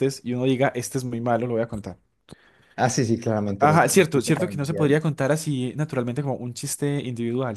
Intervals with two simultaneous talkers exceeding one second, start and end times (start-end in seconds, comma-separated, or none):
3.6-4.9